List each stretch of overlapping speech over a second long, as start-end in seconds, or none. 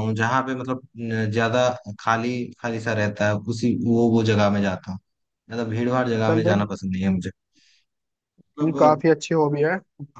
none